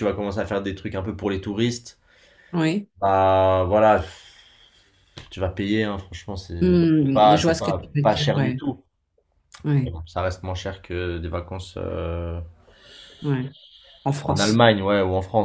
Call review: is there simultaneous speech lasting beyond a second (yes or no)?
yes